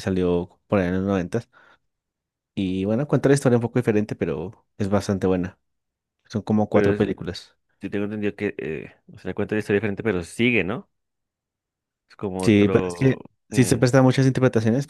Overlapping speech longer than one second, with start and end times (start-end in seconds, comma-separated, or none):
12.4-13.8